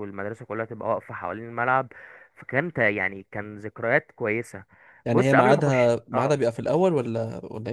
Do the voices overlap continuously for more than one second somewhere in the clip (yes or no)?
yes